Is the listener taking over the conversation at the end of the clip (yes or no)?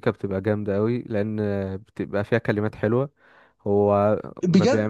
yes